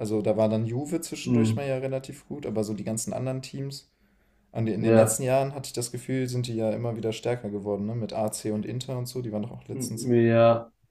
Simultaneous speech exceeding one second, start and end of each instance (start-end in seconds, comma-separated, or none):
none